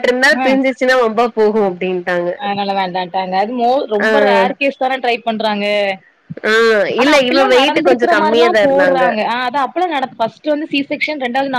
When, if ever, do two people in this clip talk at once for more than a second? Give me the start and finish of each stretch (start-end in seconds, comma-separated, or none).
7.0-9.0